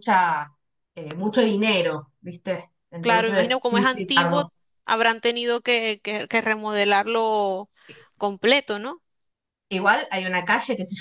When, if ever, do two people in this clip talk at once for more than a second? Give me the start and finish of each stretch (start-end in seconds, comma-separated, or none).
3.0-4.4